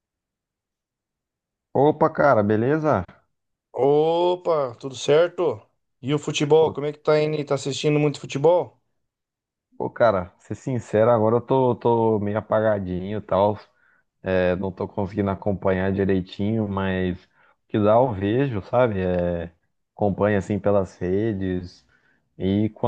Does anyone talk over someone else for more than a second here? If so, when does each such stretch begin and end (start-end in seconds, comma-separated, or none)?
none